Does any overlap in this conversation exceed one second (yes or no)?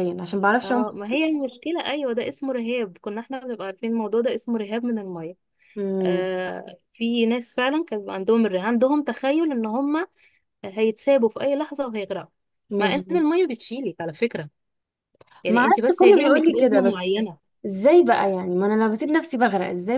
yes